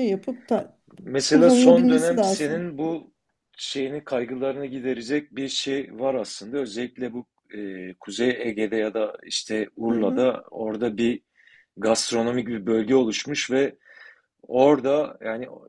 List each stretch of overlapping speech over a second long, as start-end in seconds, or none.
1.3-2.6